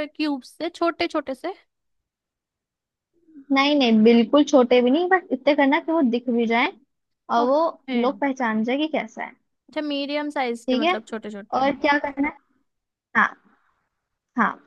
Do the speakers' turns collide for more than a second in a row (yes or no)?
no